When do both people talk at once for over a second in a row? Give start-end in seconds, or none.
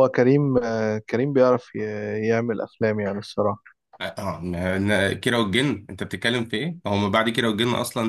none